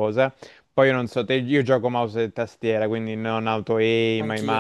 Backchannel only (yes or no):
yes